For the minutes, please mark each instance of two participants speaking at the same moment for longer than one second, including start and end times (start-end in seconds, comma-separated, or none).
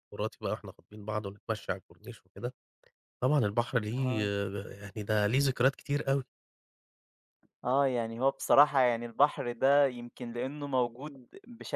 none